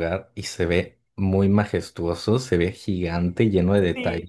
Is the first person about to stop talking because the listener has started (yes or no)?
yes